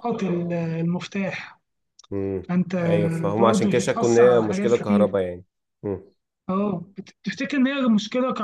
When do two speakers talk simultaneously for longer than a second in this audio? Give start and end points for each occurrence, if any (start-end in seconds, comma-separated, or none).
3.4-5.2